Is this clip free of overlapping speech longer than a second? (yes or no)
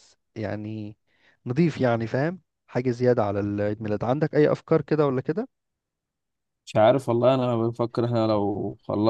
yes